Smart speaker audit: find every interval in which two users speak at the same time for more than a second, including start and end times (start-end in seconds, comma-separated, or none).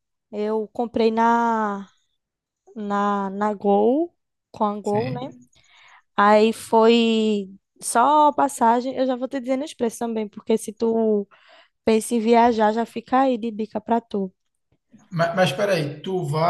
none